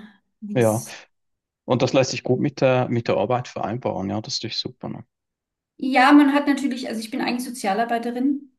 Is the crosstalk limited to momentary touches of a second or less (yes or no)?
yes